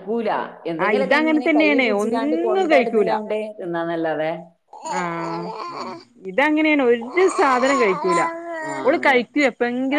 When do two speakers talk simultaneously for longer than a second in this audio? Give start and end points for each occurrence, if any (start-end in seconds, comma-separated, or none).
0.8-3.1